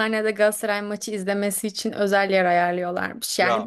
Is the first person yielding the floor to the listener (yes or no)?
no